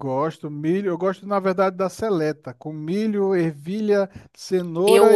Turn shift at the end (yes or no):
yes